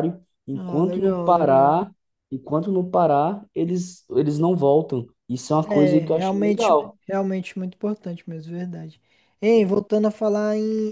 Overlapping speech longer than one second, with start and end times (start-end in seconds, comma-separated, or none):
0.5-1.8, 5.6-7.0